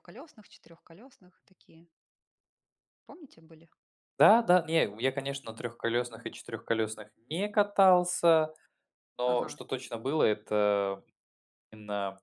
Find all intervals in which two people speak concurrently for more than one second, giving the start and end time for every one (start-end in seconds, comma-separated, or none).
none